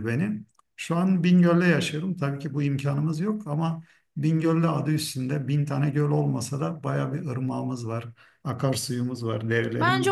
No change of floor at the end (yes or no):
no